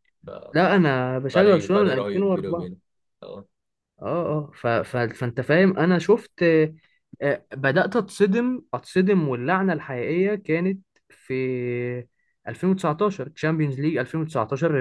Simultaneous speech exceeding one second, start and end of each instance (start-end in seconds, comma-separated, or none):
1.3-2.7